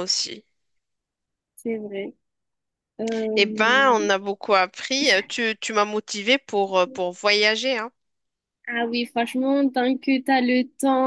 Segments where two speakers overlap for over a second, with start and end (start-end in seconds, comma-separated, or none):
none